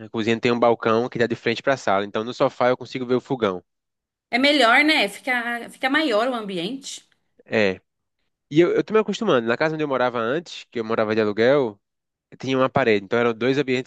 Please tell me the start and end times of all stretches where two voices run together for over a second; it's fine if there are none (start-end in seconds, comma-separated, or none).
none